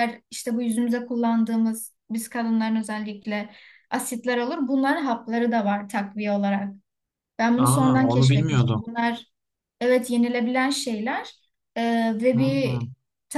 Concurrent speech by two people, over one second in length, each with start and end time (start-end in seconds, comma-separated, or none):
7.6-8.8